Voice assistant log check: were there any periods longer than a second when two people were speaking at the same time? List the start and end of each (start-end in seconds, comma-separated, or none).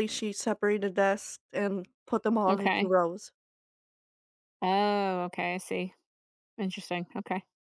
none